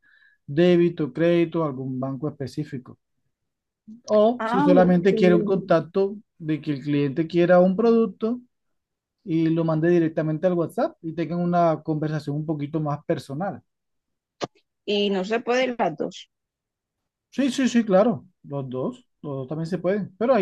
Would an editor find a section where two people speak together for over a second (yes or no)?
yes